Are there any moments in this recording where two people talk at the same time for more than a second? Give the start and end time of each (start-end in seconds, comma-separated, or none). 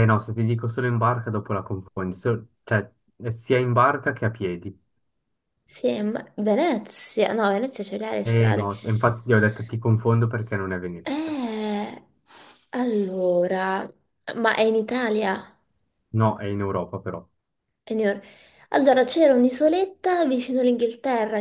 none